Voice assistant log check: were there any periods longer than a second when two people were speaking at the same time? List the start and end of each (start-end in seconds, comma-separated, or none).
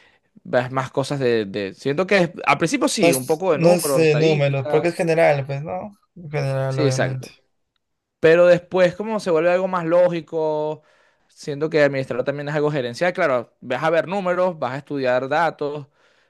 3.0-4.9